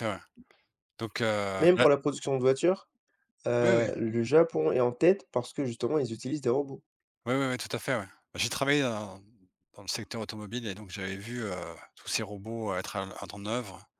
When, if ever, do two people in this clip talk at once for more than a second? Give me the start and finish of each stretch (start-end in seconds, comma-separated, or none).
none